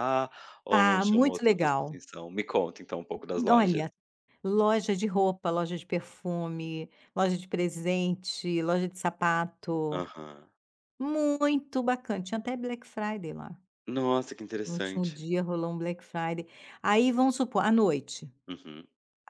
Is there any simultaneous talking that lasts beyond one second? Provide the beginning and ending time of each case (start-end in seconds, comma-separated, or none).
0.7-2.0